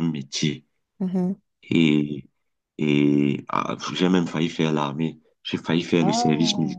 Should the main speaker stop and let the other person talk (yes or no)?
no